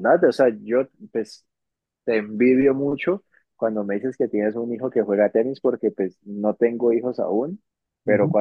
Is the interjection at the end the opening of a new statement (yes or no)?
no